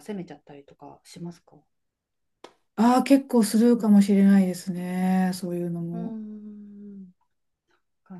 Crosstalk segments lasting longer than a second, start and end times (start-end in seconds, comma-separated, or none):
none